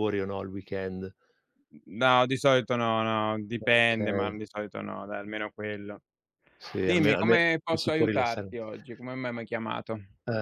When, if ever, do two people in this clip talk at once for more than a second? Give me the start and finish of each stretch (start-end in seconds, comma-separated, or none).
6.8-8.5